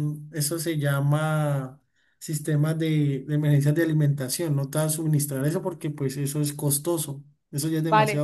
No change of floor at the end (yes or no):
no